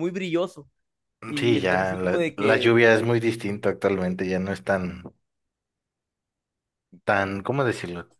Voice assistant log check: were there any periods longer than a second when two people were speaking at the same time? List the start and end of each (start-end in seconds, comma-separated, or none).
1.4-2.7